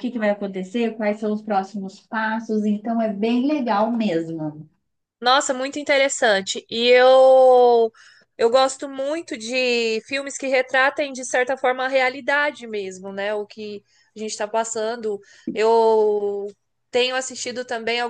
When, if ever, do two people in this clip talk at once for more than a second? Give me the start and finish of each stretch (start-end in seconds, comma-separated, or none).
none